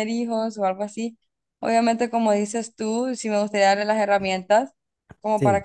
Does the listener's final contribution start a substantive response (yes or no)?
no